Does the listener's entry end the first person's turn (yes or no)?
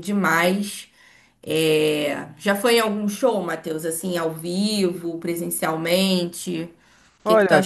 yes